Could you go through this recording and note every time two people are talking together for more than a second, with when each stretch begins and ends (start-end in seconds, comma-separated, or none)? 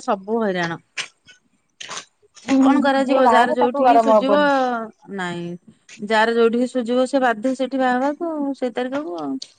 2.6-4.3